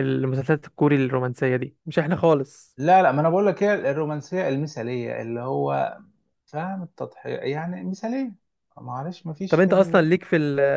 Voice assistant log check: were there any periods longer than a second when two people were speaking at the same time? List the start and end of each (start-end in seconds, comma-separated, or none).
none